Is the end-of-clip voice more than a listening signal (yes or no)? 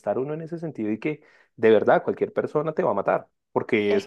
yes